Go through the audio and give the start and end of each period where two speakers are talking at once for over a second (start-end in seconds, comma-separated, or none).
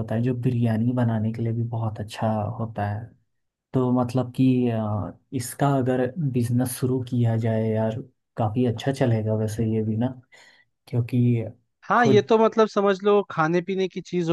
none